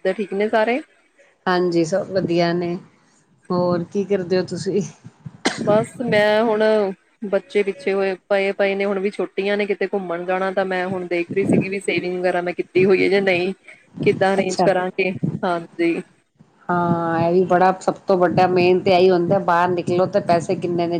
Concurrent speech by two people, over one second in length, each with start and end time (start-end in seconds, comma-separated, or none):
none